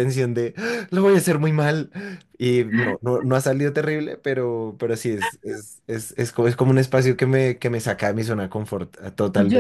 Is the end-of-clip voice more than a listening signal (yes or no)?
yes